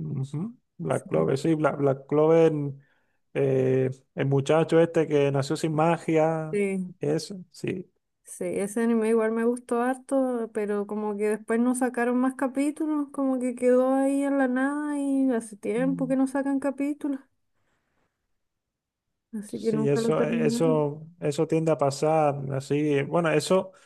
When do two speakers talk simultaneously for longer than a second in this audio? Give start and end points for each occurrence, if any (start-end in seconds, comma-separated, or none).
19.5-20.9